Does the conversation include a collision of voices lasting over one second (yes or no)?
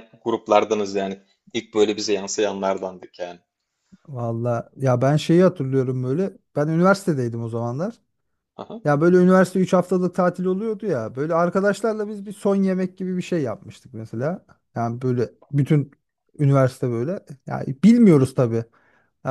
no